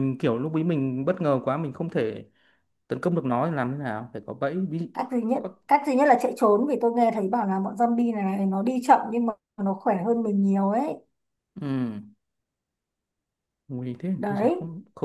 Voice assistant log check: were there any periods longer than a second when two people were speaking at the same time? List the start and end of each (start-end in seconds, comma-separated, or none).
none